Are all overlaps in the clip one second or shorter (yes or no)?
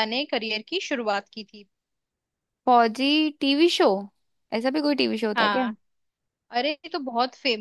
yes